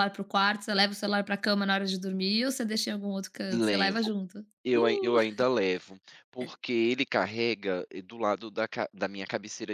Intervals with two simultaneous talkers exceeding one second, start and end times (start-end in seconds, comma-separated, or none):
none